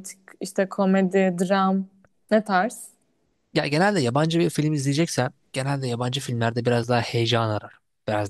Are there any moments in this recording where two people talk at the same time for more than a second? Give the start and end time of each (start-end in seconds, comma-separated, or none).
none